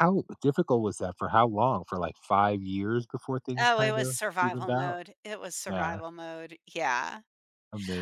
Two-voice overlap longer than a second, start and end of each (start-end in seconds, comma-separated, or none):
3.6-5.0